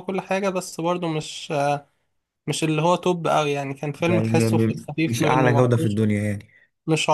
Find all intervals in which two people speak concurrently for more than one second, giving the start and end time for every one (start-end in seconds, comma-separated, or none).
4.1-6.0